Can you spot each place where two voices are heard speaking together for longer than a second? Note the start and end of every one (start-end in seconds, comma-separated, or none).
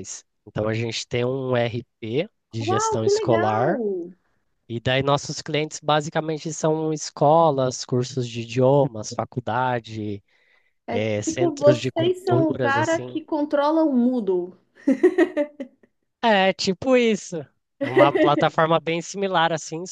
2.6-3.8, 10.9-13.2